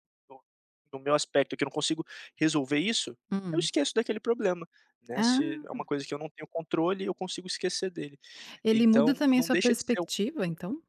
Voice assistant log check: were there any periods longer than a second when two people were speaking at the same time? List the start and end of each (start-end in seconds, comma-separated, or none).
8.7-10.1